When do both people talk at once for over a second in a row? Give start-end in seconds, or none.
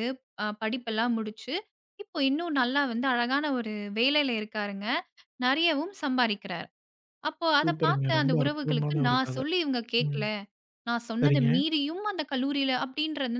7.6-9.4